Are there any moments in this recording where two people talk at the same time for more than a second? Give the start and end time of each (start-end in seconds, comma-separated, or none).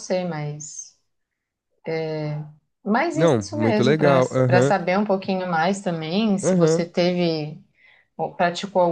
3.1-4.7